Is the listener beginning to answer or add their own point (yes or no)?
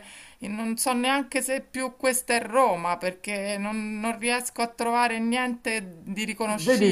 yes